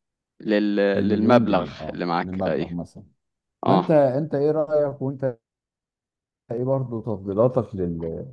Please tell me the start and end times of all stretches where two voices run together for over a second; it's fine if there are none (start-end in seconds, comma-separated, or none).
0.9-2.7